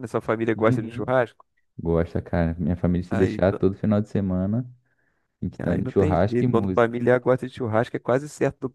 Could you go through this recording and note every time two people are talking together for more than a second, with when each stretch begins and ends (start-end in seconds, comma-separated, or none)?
5.7-6.9